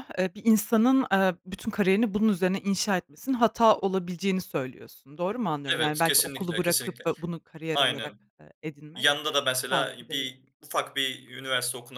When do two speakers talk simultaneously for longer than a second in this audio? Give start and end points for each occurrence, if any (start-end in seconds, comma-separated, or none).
5.7-7.0